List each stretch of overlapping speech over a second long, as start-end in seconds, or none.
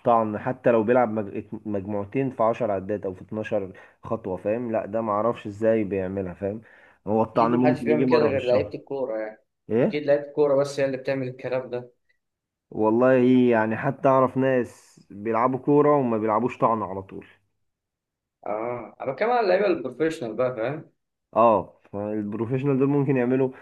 7.3-8.7